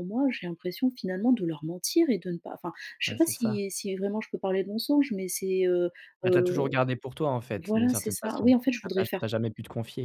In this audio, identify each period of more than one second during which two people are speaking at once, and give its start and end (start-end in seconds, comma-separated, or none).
7.6-9.4